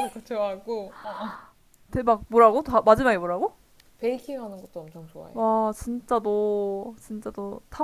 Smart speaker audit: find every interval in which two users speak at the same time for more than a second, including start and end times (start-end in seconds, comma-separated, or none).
none